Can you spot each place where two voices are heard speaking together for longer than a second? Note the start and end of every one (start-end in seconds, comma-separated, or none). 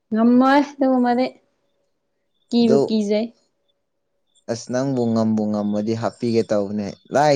none